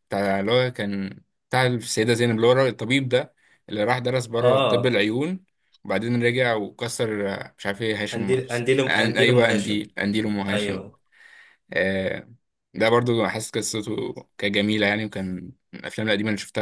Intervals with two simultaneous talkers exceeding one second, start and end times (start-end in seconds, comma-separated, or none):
8.1-9.8